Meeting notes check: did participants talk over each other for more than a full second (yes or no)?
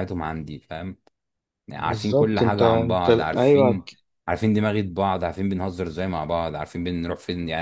yes